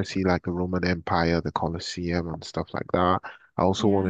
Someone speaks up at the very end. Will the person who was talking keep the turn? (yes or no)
yes